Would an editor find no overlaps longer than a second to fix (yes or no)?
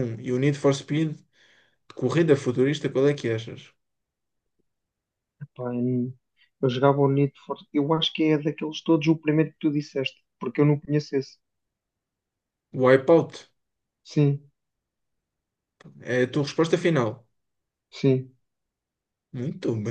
yes